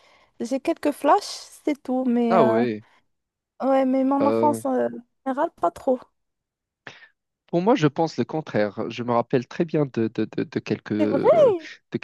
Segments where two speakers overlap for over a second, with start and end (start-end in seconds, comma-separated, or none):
none